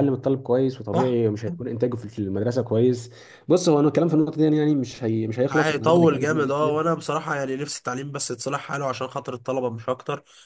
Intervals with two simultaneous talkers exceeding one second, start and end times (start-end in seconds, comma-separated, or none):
5.5-6.7